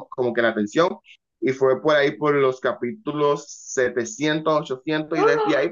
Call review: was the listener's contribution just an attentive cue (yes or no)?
yes